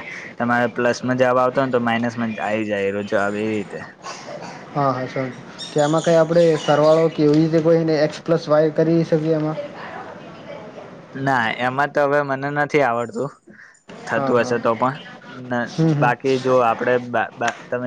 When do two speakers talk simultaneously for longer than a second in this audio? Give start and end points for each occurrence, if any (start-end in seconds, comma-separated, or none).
none